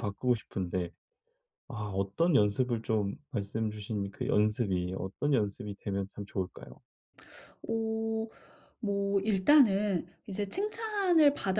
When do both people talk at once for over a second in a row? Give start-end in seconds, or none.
none